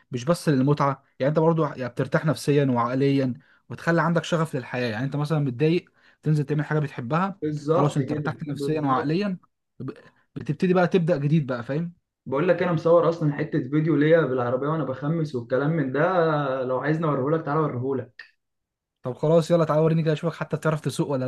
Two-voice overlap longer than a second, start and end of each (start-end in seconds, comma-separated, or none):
7.4-9.2